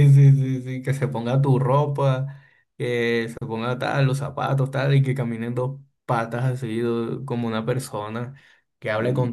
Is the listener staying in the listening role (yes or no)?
yes